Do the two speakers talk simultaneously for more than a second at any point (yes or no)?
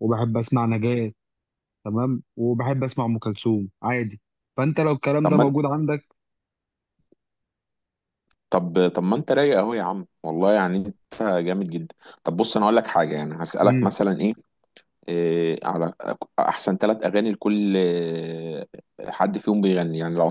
no